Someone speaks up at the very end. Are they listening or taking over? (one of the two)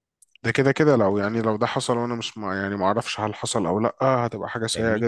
taking over